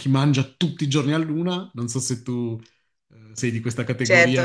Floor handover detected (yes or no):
yes